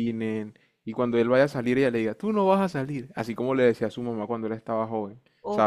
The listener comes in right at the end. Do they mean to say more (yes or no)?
yes